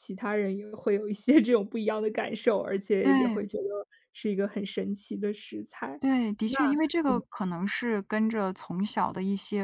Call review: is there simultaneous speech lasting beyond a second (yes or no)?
no